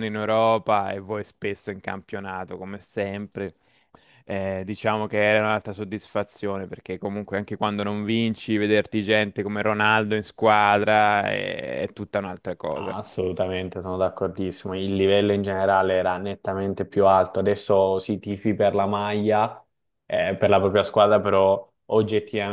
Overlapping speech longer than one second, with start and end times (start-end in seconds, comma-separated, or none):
none